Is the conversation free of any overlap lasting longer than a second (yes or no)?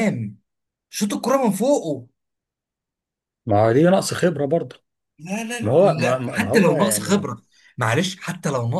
no